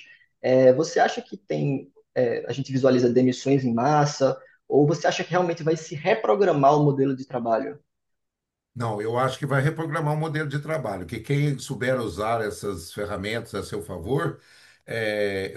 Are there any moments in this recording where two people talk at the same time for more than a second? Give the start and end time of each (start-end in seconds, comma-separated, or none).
none